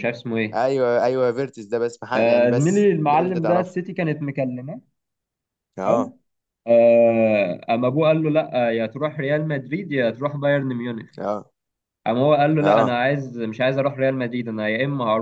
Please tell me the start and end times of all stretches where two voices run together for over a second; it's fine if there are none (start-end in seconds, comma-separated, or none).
2.1-3.8